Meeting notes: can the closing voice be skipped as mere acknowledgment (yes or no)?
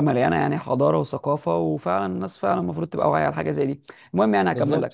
yes